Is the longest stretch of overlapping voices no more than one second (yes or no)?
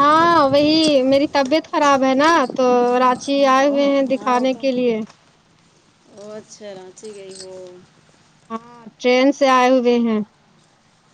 yes